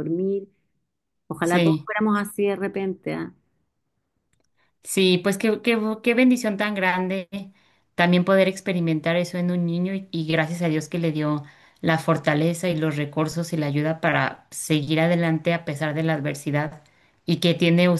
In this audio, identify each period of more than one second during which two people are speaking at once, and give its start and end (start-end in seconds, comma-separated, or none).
none